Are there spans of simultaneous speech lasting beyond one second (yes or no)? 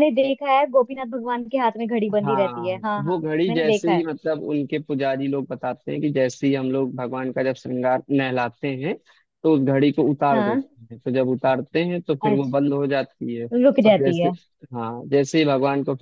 yes